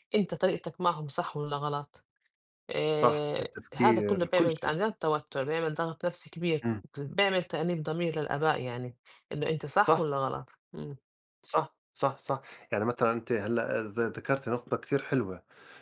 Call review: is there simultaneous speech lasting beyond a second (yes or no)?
yes